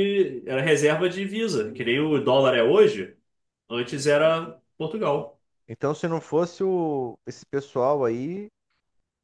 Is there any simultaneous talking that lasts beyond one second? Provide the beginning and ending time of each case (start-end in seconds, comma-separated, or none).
none